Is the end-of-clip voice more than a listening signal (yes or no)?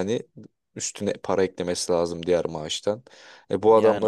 no